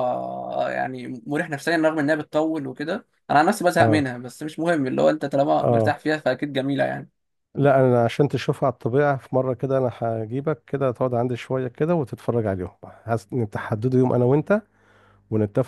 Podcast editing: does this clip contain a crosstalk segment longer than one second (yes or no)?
no